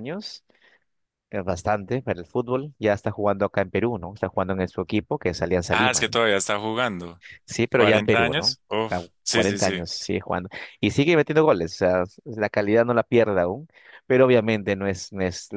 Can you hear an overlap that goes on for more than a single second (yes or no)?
yes